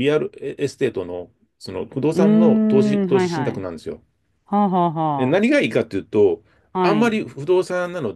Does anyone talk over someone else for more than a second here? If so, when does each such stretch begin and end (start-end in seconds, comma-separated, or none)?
2.1-3.7